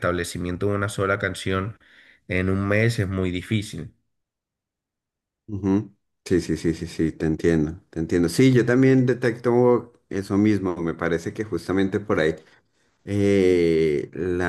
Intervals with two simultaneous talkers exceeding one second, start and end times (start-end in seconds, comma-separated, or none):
none